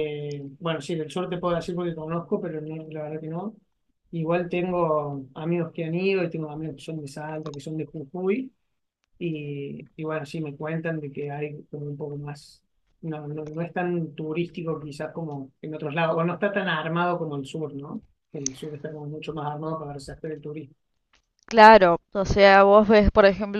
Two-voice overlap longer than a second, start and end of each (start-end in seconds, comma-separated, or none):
none